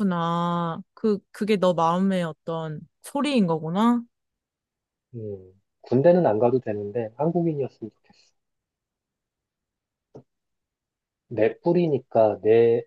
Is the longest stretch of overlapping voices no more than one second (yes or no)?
yes